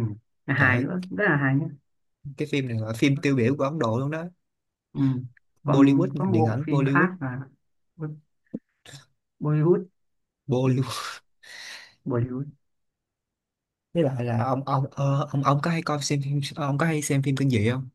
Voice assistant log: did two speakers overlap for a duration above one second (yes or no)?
yes